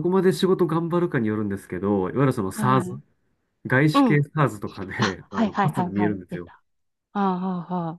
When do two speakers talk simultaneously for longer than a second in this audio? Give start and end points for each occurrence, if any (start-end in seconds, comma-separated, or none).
5.0-6.5